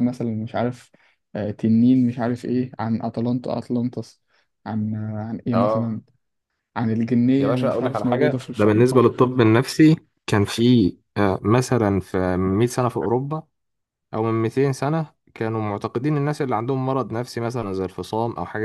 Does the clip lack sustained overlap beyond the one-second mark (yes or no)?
no